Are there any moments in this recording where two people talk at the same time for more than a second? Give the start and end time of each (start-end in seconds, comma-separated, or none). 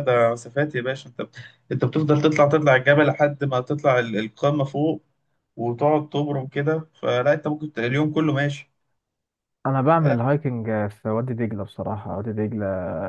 none